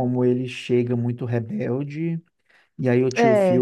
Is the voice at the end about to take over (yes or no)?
no